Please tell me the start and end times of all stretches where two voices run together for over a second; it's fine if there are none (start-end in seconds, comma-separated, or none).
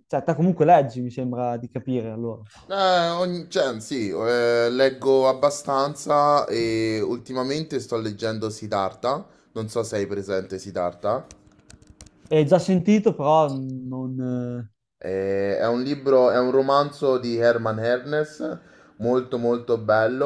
none